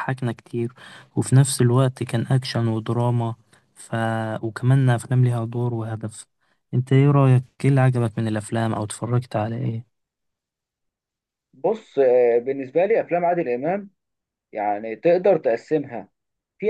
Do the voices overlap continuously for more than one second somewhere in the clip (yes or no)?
no